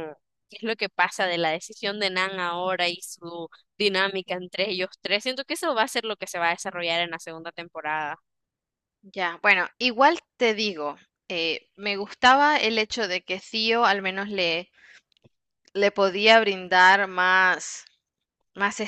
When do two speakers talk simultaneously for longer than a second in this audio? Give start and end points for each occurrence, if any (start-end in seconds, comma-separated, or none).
none